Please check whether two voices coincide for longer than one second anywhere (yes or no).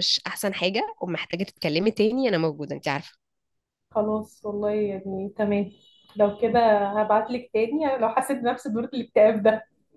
no